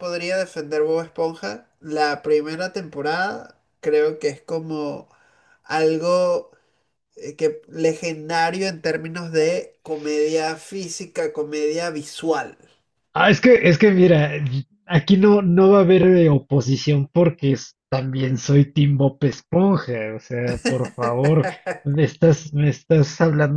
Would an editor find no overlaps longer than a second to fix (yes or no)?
yes